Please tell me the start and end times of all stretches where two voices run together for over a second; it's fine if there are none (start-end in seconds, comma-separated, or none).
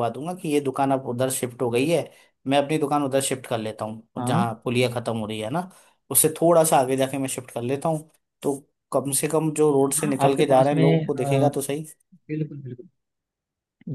10.0-11.5